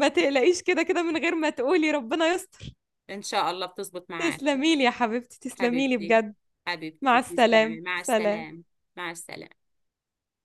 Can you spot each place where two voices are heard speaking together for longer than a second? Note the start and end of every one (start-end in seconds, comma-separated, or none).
7.0-8.5